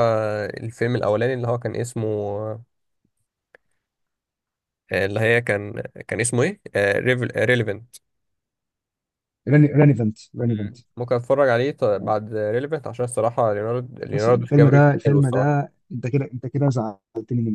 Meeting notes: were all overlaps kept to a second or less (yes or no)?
no